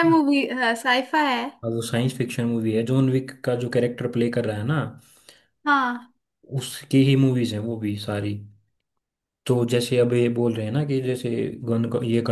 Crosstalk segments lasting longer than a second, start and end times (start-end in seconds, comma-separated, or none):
none